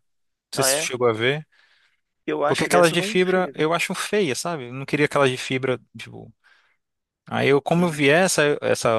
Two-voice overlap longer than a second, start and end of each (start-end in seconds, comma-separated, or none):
2.5-3.7